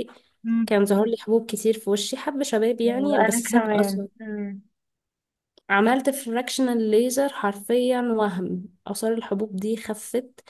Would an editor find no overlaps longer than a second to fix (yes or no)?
no